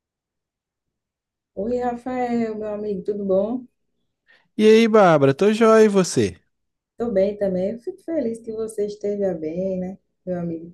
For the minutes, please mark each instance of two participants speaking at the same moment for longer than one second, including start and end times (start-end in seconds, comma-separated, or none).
none